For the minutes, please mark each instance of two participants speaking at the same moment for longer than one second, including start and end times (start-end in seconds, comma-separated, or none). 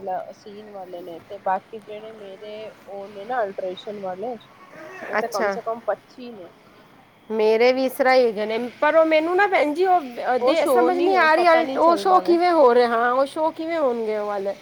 10.4-12.4